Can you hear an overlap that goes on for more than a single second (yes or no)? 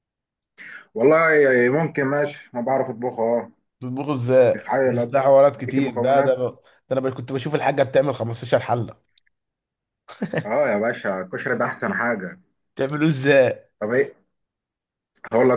yes